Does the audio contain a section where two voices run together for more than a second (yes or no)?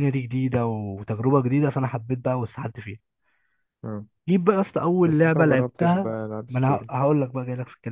yes